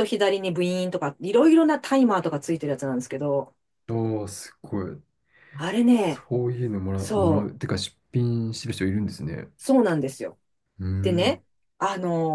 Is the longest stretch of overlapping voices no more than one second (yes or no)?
yes